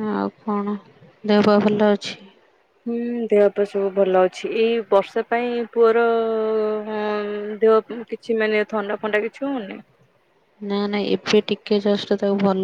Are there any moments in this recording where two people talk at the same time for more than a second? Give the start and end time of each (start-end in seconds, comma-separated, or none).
none